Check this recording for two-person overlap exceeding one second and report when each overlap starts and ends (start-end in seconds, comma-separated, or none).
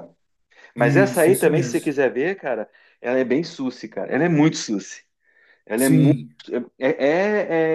0.8-1.9